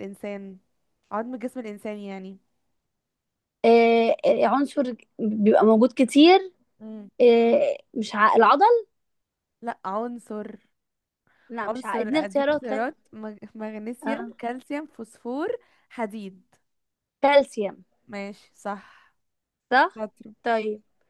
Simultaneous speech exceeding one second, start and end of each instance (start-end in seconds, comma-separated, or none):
11.6-12.9